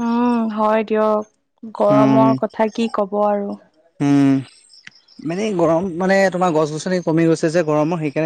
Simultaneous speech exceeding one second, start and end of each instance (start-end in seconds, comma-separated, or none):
none